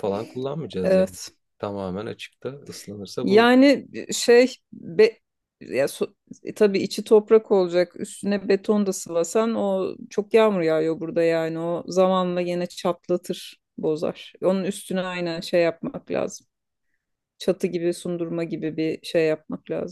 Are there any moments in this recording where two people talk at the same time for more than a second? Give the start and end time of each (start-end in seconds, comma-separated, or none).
none